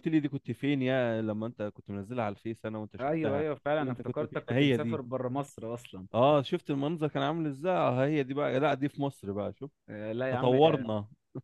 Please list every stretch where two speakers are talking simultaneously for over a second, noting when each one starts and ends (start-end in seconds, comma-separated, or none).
3.0-5.0